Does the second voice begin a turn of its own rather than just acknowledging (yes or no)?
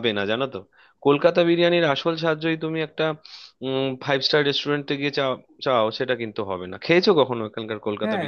yes